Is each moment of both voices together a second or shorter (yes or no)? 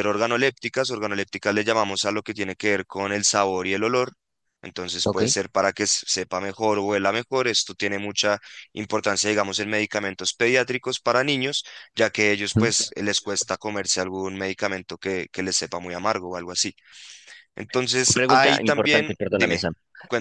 no